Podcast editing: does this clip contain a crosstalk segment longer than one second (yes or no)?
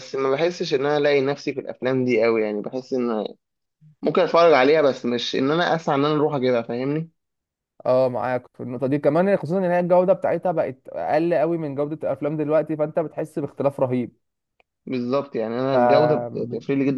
no